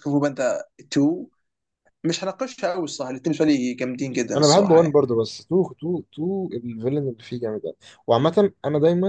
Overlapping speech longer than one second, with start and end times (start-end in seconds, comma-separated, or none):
none